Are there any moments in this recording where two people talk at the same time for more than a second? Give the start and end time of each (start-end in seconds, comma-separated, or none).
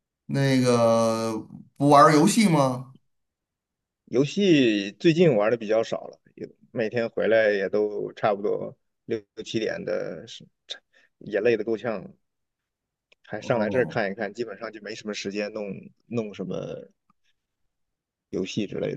none